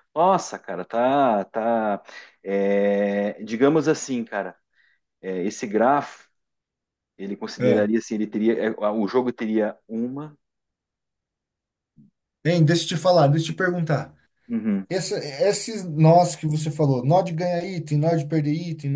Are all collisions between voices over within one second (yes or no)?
yes